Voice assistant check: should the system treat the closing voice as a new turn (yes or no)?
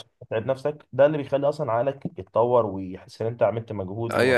yes